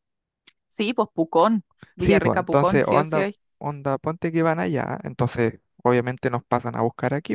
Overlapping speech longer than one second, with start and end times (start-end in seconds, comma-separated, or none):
2.0-3.4